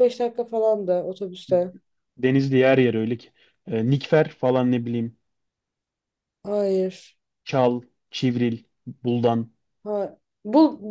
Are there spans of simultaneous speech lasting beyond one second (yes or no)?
no